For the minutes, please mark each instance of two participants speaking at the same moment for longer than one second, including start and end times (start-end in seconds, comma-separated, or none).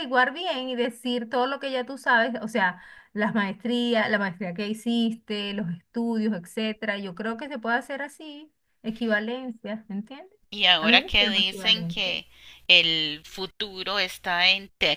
10.8-12.1